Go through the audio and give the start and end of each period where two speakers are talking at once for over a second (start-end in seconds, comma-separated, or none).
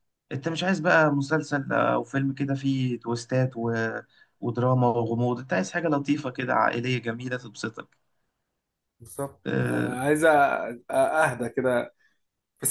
none